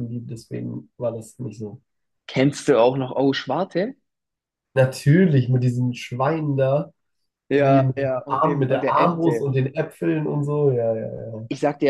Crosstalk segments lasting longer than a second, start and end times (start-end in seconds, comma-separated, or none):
7.6-9.5